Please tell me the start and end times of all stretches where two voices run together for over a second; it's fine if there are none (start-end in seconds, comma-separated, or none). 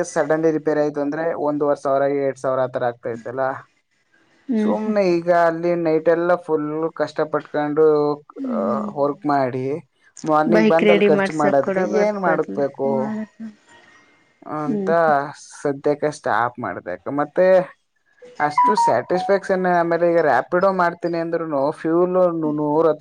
10.6-12.6